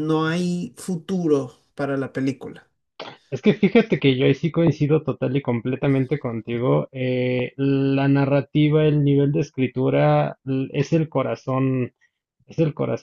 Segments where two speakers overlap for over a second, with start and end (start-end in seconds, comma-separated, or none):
none